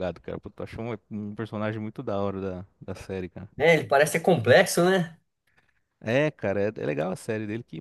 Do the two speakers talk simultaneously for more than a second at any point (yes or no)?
no